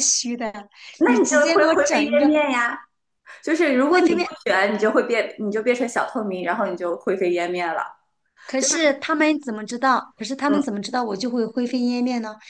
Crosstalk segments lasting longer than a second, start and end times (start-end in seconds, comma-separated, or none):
1.0-2.3